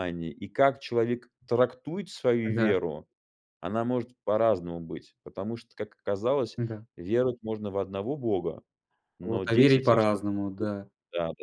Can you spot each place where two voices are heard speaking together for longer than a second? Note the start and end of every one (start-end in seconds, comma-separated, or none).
9.2-10.7